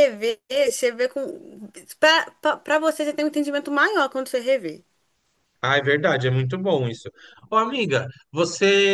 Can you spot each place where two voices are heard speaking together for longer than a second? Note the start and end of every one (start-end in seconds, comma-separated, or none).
none